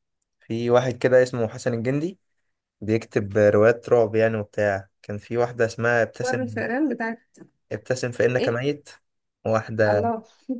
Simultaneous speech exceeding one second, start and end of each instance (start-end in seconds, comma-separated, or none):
none